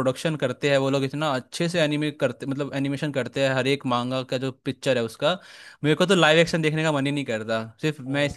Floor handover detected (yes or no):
yes